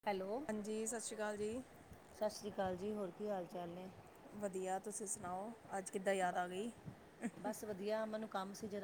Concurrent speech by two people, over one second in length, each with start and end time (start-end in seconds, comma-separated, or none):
none